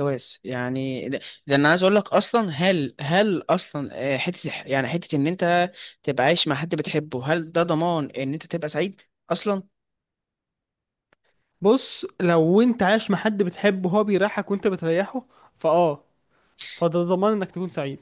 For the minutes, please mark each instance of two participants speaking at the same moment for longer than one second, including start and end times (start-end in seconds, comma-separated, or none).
none